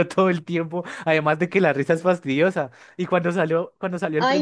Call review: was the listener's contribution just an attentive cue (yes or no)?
no